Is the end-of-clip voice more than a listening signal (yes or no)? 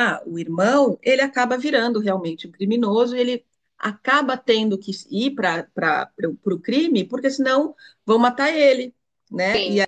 yes